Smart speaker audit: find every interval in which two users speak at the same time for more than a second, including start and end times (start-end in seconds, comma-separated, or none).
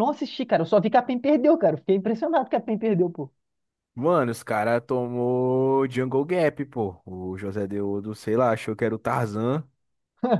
none